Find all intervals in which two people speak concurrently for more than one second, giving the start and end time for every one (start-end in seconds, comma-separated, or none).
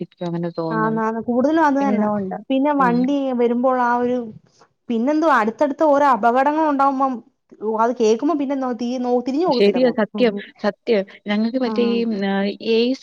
none